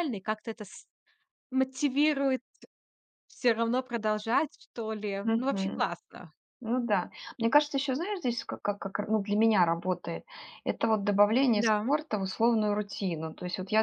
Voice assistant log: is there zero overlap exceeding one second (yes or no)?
yes